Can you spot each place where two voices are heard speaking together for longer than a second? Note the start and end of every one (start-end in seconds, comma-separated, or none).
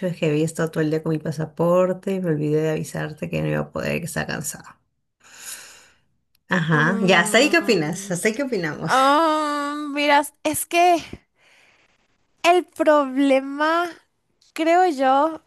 6.7-8.2